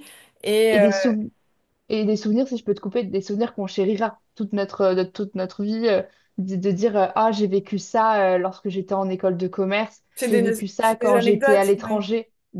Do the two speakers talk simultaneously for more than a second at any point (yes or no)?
yes